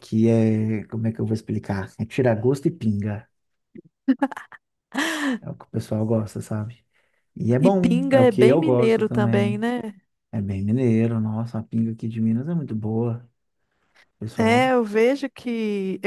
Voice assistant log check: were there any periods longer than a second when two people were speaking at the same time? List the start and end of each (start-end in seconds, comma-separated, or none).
7.6-9.6